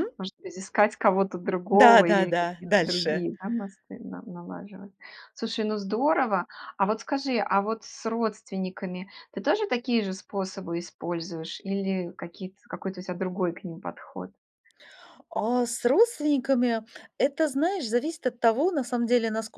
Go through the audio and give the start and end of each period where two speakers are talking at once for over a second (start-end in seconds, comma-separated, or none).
1.7-3.3